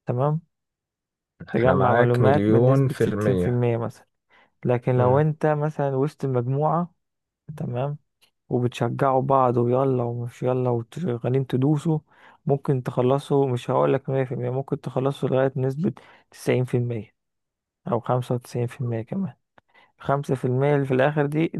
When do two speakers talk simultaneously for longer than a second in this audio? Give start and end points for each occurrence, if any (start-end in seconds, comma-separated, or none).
1.6-3.6